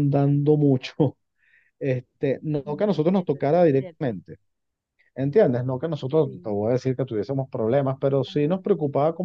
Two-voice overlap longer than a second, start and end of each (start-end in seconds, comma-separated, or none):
2.5-4.2